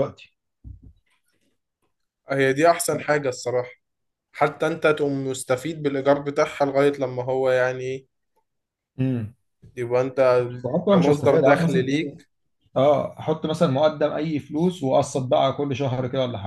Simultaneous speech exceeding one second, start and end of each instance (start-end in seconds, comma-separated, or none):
10.9-12.2